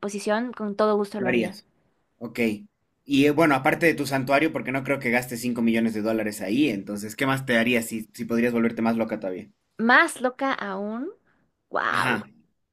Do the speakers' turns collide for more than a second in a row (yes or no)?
no